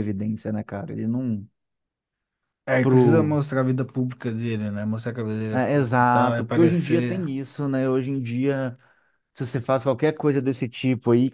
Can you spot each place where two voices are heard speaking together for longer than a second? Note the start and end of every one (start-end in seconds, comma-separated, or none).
5.5-7.2